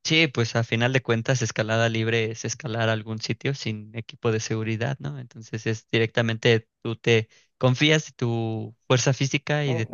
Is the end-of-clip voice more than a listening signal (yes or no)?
yes